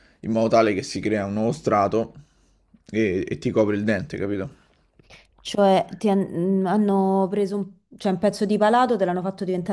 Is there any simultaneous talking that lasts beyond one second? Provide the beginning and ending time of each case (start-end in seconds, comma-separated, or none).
none